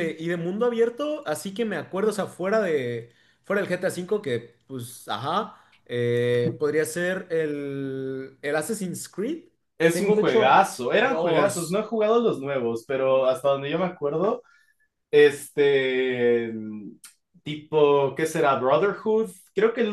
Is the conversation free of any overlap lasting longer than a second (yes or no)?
no